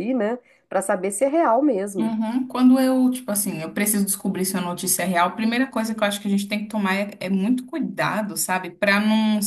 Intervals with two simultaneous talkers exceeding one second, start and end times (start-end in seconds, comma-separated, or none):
none